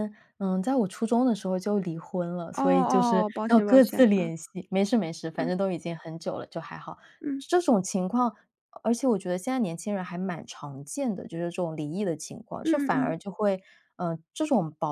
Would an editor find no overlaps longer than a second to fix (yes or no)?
no